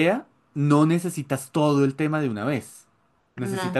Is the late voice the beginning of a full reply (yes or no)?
no